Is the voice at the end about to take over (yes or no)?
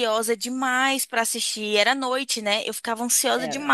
no